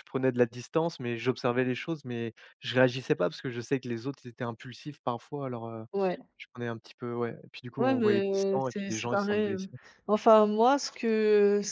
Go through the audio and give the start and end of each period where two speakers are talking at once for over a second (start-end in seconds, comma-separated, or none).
7.8-9.7